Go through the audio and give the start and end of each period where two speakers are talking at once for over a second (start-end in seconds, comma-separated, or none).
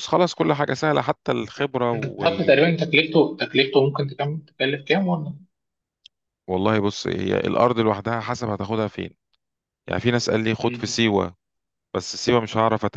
none